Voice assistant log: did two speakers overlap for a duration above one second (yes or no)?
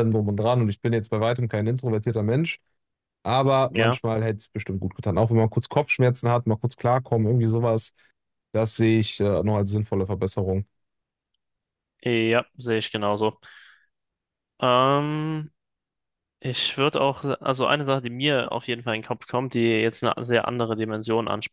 no